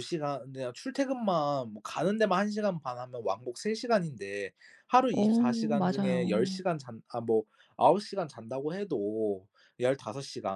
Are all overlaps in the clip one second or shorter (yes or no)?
no